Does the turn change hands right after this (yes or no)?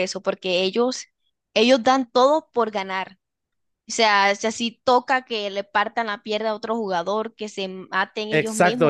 yes